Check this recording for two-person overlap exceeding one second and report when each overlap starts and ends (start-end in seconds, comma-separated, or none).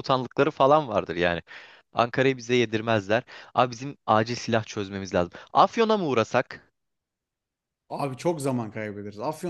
none